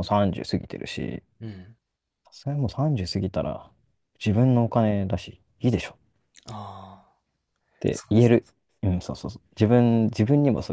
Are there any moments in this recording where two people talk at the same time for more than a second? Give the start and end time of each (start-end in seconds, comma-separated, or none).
none